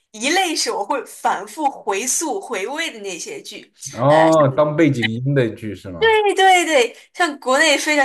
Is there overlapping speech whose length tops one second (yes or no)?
no